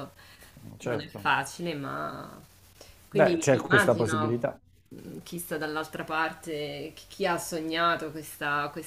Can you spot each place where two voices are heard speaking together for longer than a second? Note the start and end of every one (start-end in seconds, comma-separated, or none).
3.1-4.5